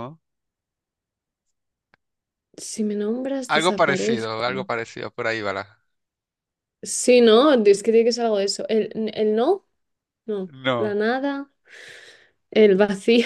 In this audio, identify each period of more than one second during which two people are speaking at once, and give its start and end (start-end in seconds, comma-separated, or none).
3.5-4.7